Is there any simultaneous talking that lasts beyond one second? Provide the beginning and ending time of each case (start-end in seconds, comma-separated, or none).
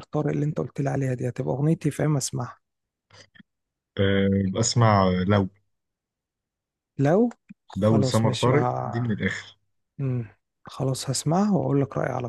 7.8-9.1